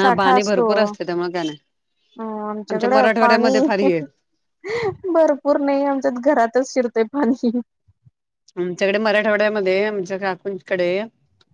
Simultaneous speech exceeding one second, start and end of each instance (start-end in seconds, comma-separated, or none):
2.7-4.0